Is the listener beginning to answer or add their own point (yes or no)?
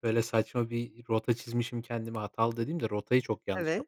yes